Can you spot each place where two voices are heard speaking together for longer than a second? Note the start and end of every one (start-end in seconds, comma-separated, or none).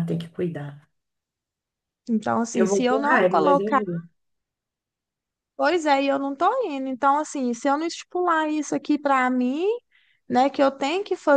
2.5-3.8